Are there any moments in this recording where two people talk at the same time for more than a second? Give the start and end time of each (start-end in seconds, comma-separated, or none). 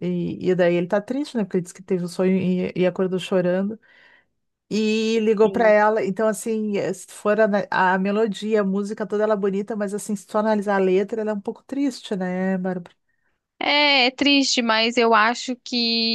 none